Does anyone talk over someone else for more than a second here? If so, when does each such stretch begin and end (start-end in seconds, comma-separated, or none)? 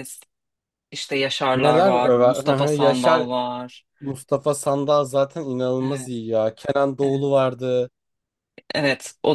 1.5-3.3